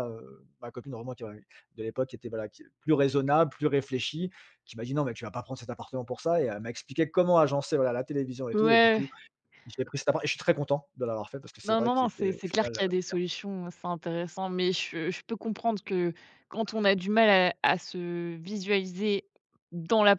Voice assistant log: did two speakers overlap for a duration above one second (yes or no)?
yes